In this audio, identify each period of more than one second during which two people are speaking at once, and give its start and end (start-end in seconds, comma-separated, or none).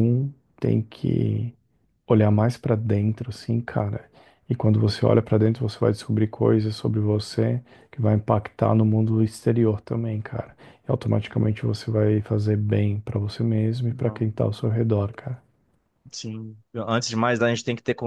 none